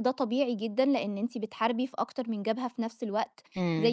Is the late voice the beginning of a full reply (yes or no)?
no